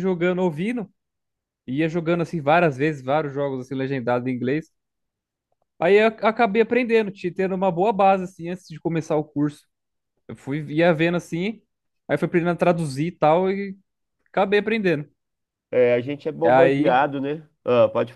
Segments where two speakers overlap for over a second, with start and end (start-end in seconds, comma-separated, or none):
none